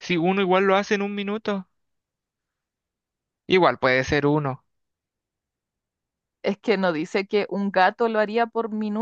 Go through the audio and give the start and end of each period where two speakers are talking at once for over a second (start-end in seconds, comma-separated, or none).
none